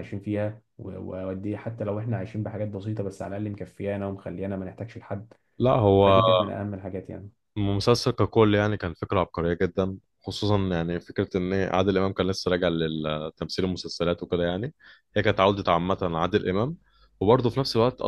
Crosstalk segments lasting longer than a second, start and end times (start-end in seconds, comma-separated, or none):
none